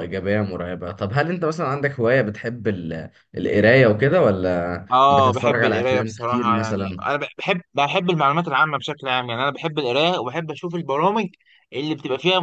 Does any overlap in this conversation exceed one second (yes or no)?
yes